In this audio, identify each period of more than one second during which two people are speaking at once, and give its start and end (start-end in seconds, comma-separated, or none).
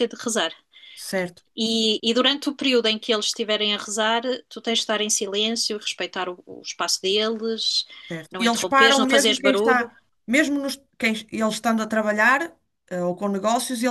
8.3-9.9